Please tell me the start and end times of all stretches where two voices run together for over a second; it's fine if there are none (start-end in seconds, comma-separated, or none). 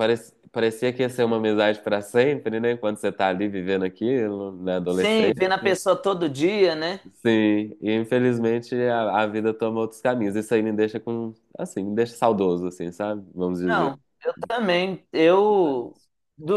none